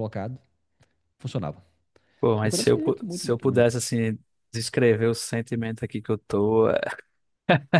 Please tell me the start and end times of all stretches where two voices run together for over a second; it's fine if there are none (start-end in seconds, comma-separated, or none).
2.4-3.8